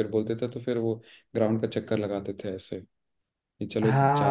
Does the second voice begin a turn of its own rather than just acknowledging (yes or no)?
yes